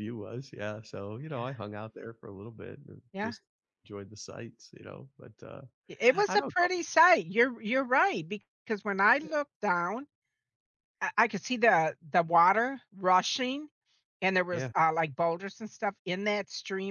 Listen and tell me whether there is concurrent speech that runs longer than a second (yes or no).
no